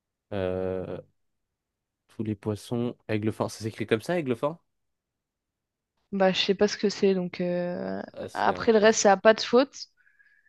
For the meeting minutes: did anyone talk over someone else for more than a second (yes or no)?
no